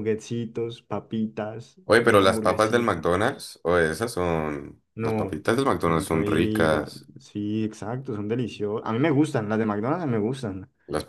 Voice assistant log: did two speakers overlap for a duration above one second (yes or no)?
yes